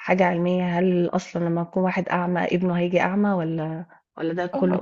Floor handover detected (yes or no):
yes